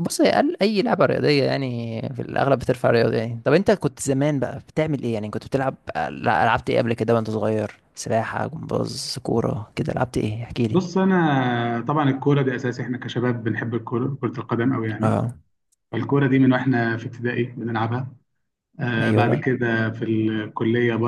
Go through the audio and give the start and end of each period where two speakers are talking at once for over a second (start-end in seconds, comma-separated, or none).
none